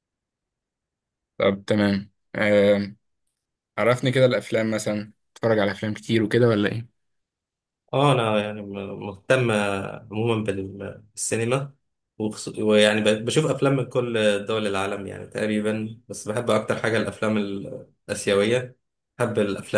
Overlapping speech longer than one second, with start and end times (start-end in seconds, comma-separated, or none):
none